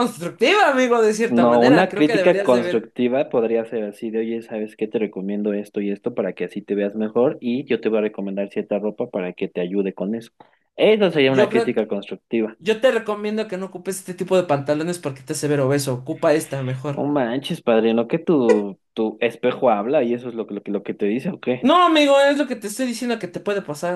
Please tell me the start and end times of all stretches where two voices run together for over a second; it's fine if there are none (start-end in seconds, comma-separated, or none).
1.3-2.9